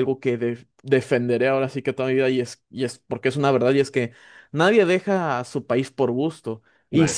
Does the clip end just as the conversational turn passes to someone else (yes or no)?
no